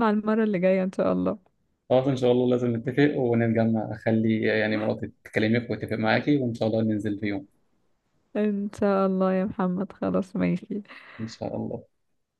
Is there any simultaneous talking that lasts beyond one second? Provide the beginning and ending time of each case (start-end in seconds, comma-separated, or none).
none